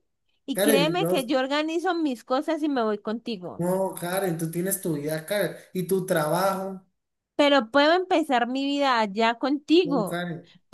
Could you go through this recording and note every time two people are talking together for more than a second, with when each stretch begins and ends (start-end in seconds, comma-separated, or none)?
none